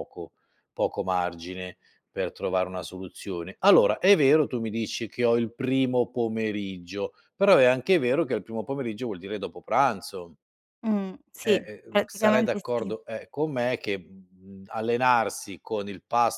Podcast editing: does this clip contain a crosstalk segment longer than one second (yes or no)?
yes